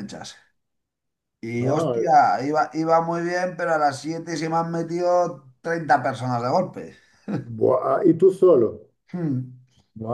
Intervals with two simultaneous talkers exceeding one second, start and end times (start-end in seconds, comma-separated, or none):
none